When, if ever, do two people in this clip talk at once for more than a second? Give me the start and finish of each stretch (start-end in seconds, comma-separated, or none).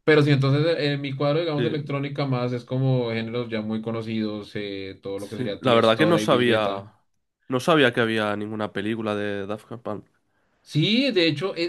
5.2-6.9